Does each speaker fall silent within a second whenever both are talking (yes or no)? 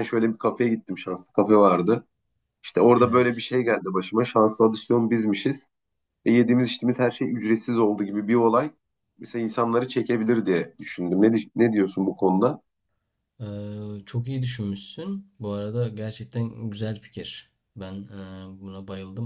yes